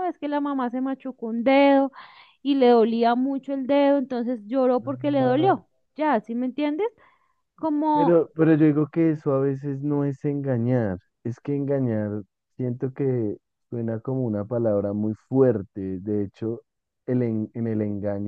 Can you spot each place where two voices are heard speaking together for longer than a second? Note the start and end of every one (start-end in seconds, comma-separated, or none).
none